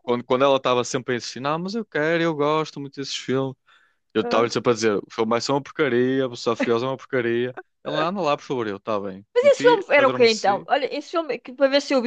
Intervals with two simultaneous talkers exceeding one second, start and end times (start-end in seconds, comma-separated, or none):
9.3-10.7